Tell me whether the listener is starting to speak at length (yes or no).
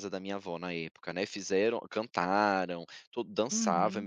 no